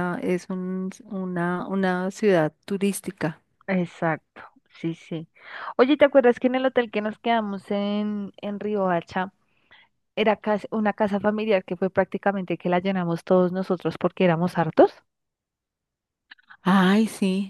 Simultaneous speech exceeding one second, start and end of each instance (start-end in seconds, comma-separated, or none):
none